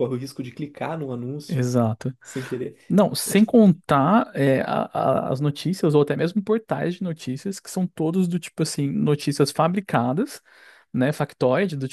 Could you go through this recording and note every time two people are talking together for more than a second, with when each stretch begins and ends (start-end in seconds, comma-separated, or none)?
none